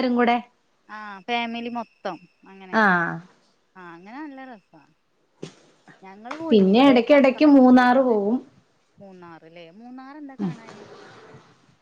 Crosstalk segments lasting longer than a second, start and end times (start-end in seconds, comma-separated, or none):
6.5-8.3